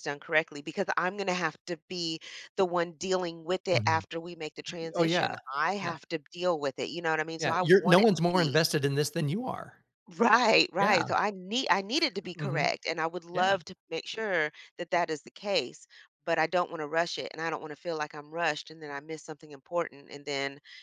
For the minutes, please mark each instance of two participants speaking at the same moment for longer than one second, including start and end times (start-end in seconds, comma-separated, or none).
7.4-8.6